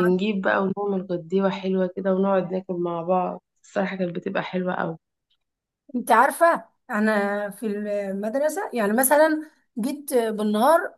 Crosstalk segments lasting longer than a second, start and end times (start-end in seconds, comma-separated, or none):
none